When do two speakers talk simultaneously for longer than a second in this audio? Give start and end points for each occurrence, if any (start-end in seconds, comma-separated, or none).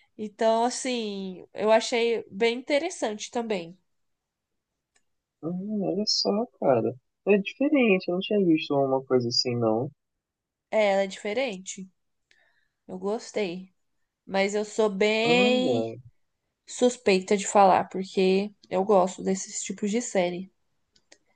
none